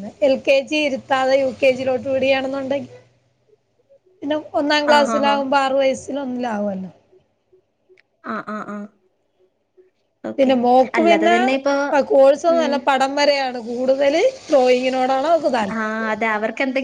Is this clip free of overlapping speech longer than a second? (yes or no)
yes